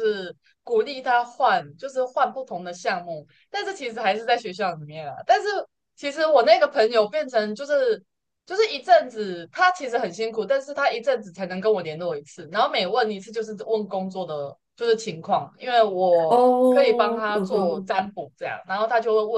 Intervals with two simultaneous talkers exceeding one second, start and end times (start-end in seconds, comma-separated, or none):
16.3-17.9